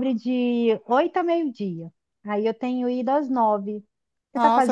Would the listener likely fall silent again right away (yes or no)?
no